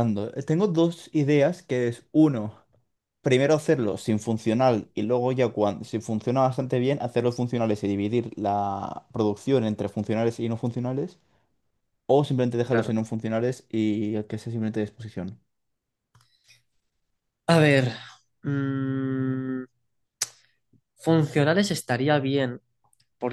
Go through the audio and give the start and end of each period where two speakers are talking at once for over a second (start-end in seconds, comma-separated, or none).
none